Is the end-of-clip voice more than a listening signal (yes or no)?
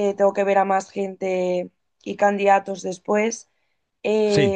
no